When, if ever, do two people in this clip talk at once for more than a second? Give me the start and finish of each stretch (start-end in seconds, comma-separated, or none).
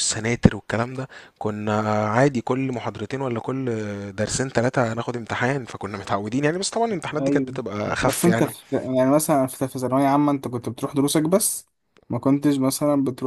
7.2-8.5